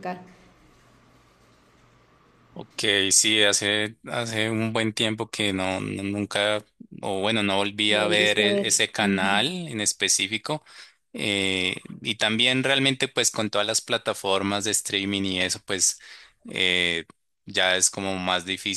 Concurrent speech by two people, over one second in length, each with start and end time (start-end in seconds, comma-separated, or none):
7.9-9.4